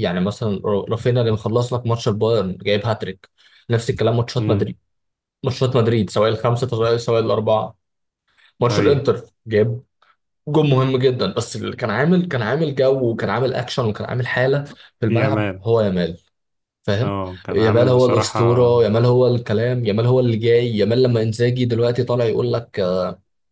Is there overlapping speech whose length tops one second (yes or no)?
yes